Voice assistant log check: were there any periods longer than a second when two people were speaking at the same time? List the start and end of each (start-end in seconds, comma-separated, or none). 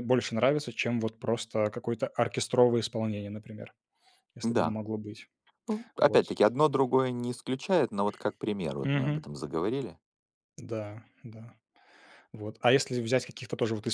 none